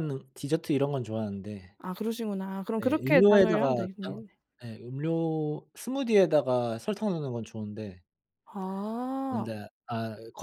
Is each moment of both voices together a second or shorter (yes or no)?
no